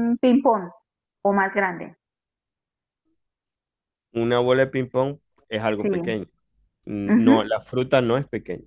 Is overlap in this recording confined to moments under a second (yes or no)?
yes